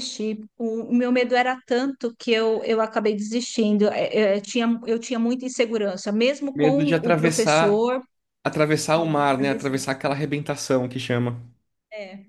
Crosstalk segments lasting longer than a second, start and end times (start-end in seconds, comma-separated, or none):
6.5-7.8